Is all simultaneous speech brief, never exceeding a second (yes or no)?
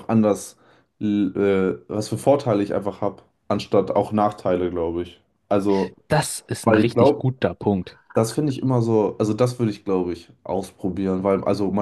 yes